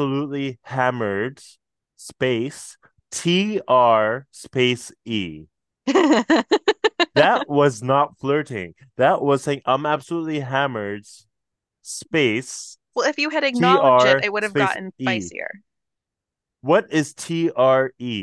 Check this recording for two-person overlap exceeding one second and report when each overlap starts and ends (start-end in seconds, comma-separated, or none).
13.5-15.3